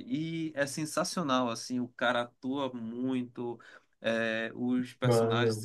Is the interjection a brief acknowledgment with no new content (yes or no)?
yes